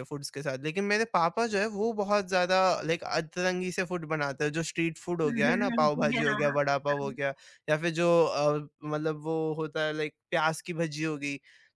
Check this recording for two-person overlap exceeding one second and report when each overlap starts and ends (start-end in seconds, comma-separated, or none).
5.0-7.2